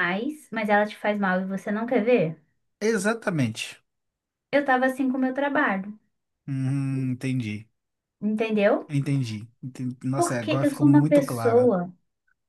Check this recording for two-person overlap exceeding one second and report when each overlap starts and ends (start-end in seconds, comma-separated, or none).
10.2-11.7